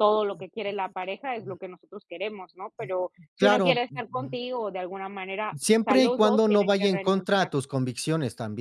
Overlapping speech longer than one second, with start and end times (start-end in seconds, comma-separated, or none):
5.5-7.5